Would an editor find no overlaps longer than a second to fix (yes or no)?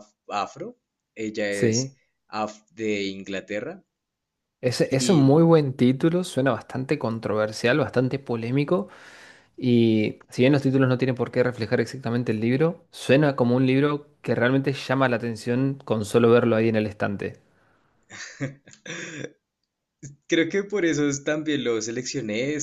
yes